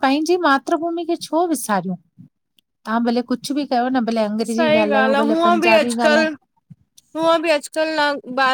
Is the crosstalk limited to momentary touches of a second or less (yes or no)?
no